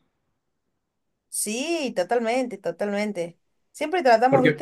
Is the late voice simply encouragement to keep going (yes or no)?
yes